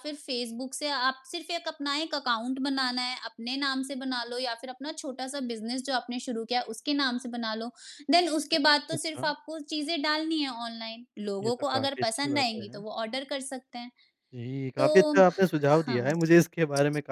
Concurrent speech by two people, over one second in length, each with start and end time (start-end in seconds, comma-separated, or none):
11.4-12.8